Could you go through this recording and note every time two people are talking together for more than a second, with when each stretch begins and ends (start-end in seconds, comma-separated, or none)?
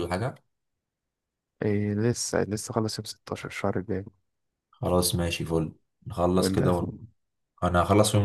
none